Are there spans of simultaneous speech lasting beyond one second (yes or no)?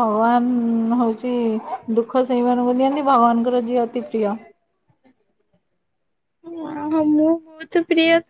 no